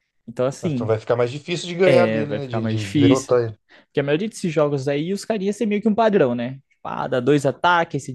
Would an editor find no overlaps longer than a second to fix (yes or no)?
no